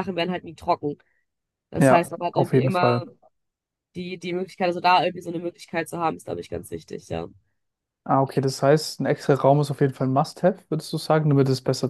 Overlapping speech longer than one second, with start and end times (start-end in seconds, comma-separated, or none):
1.8-3.0